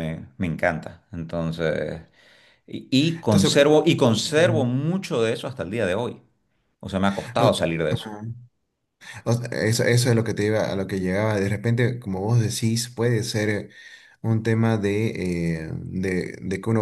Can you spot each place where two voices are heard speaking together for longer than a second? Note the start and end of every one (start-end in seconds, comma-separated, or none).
none